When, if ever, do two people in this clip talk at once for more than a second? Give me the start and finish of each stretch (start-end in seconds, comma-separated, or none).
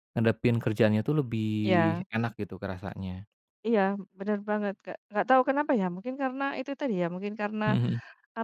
none